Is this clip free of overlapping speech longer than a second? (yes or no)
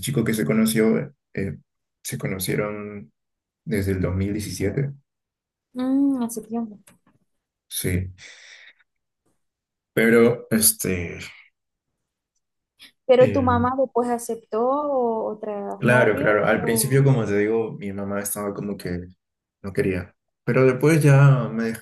no